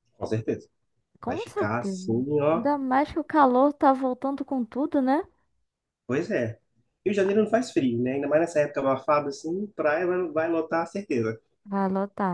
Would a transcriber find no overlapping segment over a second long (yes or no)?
no